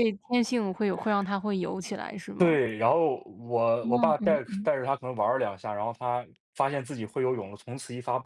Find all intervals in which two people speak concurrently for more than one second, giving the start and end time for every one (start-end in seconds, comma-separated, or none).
none